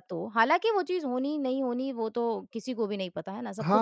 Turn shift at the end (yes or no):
yes